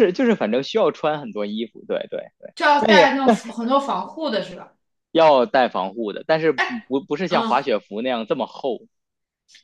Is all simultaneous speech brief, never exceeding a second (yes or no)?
yes